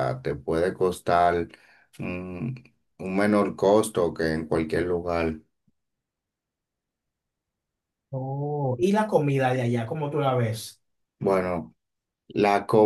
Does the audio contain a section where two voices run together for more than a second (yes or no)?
no